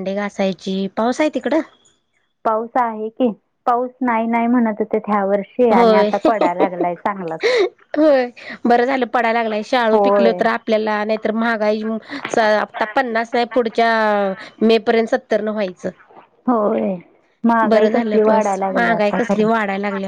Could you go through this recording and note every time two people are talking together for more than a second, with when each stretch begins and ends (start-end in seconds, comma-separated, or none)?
17.7-19.5